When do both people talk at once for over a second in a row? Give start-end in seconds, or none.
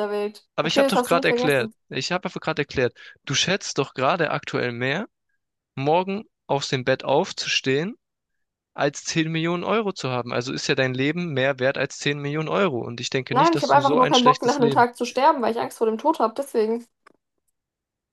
0.5-1.7, 13.3-14.8